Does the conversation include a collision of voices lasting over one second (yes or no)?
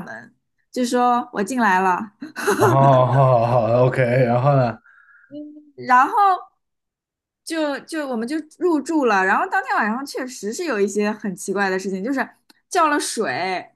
no